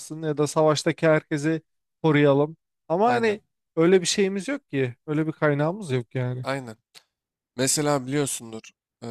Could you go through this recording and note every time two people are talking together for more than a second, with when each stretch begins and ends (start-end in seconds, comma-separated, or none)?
none